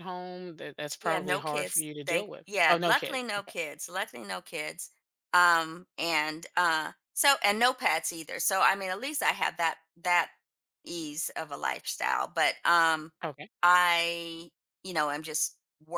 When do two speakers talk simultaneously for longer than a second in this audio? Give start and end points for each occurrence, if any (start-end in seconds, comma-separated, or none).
1.0-3.5